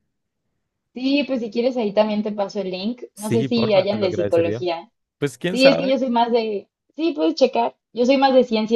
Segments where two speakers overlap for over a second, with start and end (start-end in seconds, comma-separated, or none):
3.1-4.7